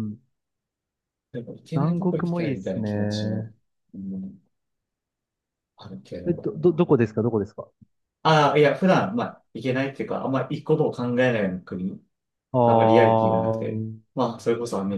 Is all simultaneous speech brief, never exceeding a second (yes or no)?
no